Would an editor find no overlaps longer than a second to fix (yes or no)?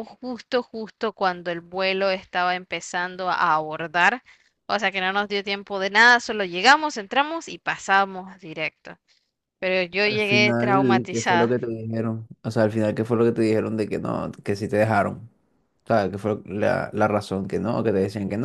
no